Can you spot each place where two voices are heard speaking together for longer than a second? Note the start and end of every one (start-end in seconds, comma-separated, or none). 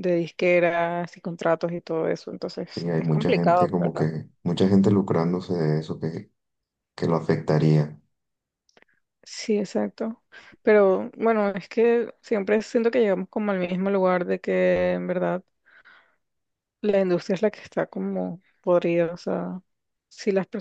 2.7-4.1